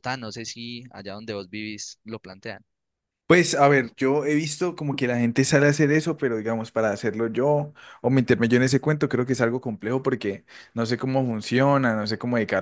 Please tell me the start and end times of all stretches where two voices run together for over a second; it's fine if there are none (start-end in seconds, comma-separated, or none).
none